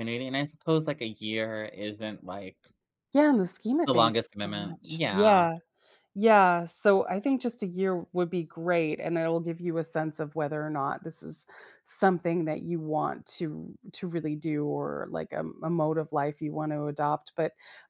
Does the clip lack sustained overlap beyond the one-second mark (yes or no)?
no